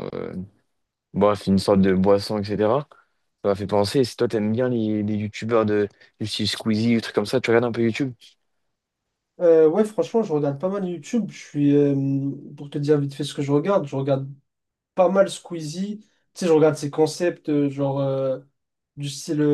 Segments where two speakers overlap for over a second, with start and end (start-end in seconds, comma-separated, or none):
none